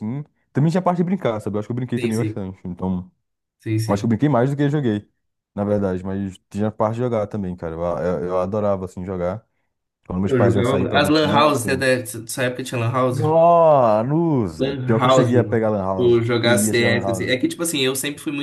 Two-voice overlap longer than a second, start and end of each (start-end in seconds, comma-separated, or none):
10.2-11.9, 14.6-17.3